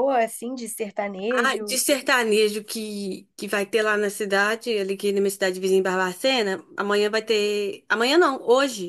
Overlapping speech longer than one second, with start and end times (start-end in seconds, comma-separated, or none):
none